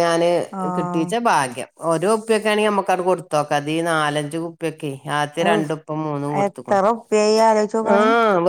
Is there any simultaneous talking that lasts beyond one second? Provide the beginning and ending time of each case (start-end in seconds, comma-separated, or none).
none